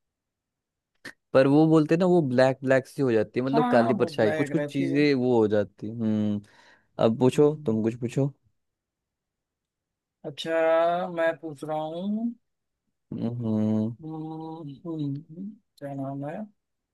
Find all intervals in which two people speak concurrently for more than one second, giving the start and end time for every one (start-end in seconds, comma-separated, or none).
3.5-5.0